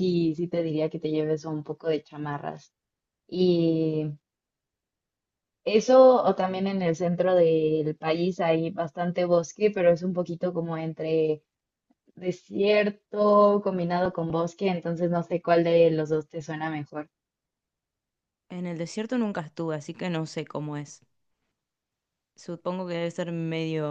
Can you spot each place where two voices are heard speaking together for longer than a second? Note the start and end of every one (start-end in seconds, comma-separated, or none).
none